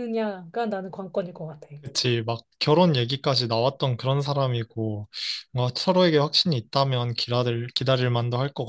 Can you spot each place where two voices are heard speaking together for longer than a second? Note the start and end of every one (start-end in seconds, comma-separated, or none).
none